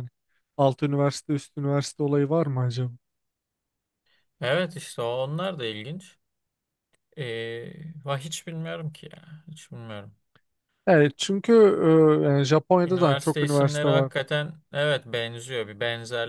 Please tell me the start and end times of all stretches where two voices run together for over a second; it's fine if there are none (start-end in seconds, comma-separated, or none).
12.8-14.1